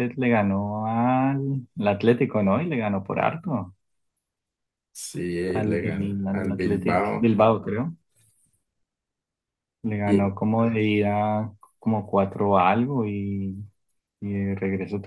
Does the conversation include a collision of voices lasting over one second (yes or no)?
yes